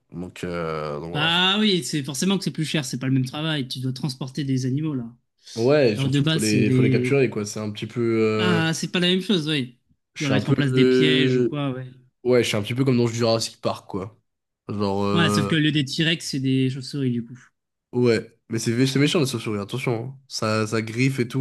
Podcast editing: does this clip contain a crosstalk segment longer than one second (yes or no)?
yes